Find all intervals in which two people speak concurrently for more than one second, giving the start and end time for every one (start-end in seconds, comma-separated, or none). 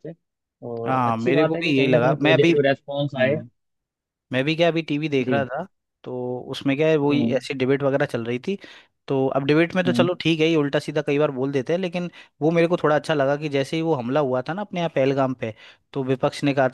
0.8-2.5